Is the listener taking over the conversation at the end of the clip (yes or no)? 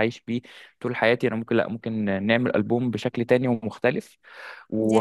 no